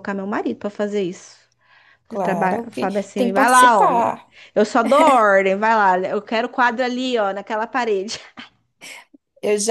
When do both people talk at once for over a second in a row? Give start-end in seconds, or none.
2.1-4.3